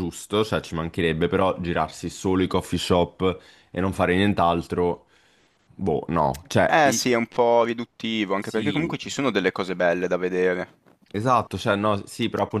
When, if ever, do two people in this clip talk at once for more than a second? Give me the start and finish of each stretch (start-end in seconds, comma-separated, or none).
none